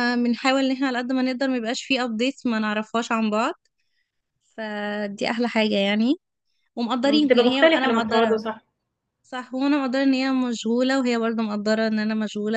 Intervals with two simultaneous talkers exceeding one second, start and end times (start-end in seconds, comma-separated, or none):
7.0-8.4